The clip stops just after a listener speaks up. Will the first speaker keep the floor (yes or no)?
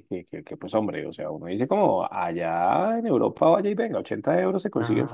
no